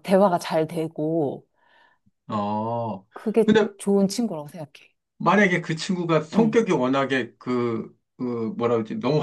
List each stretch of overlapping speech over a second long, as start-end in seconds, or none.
none